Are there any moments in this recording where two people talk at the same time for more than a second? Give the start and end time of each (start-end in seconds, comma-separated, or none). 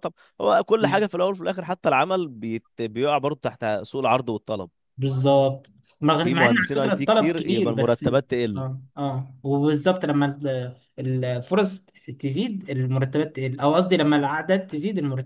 6.2-8.7